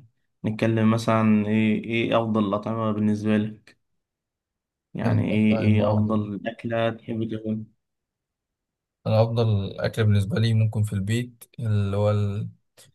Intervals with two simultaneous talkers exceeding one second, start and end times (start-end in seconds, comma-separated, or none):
5.0-6.3